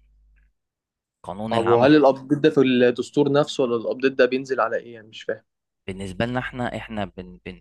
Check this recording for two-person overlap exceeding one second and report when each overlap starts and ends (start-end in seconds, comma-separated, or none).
none